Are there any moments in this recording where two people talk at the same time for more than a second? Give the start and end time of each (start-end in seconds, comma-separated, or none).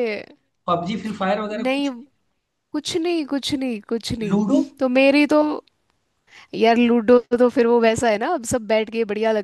none